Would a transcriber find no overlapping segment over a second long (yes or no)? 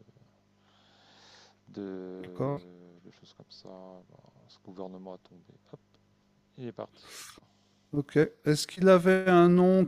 yes